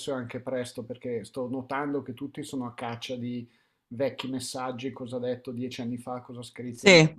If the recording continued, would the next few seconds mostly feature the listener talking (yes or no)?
no